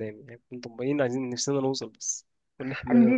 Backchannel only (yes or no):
no